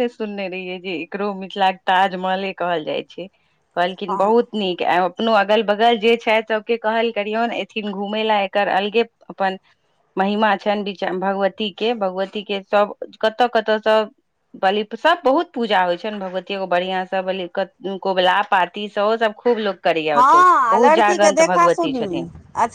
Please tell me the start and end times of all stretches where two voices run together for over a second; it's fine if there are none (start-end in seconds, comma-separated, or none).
20.2-22.1